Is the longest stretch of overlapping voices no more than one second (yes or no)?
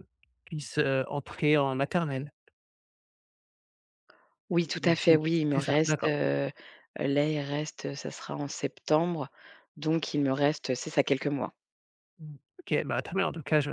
no